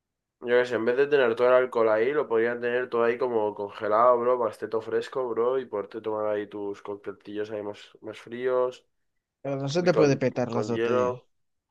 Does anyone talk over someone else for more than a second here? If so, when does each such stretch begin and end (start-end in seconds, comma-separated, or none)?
9.7-11.2